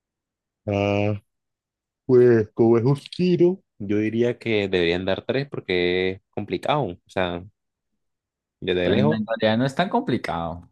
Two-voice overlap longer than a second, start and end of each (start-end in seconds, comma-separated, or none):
none